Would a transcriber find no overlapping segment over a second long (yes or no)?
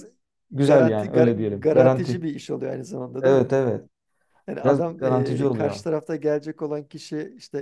no